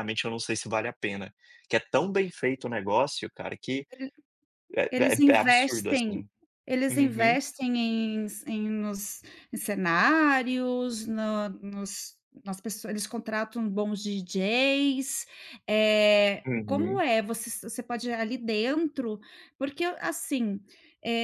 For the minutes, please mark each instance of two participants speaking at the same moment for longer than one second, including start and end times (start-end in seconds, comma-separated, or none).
4.9-6.3